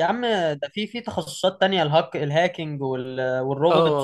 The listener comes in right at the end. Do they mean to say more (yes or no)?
yes